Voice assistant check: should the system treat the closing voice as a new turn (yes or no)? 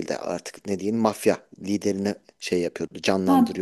yes